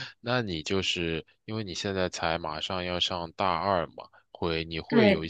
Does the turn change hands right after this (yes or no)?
no